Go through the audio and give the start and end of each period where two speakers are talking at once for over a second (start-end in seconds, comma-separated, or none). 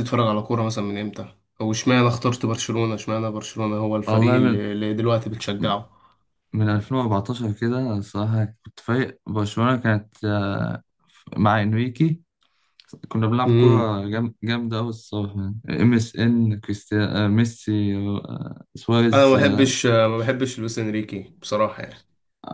none